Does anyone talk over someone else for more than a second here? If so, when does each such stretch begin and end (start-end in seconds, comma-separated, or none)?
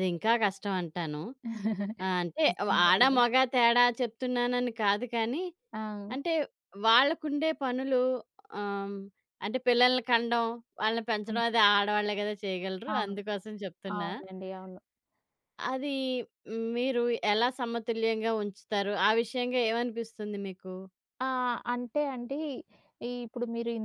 none